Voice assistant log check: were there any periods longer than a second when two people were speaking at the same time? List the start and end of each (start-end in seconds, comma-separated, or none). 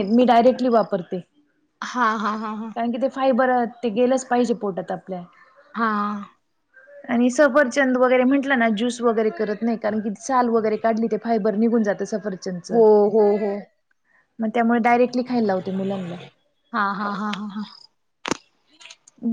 none